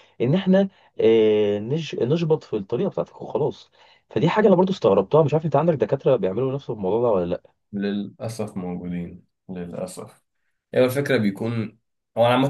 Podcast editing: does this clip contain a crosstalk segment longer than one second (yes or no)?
no